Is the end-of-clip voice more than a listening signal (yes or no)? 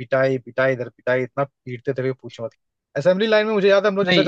no